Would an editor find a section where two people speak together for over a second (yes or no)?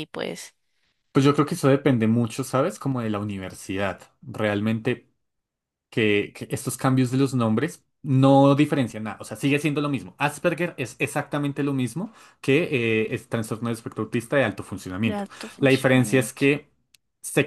yes